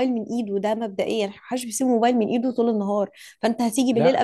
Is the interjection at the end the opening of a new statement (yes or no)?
no